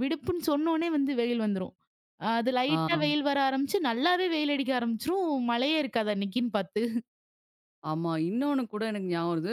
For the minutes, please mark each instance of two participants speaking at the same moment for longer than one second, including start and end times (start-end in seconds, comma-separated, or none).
none